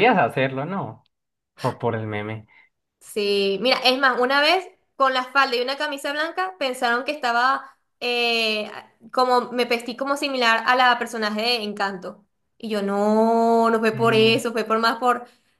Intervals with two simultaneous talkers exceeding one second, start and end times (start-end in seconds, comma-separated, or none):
none